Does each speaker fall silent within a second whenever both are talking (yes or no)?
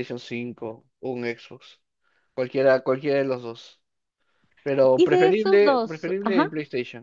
no